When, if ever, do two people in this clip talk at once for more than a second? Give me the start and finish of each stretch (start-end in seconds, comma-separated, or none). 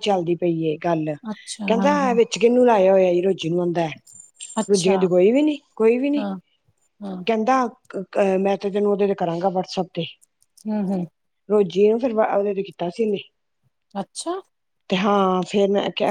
none